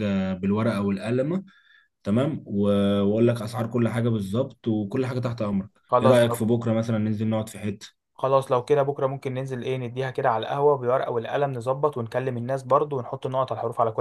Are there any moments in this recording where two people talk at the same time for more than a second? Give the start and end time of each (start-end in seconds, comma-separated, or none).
none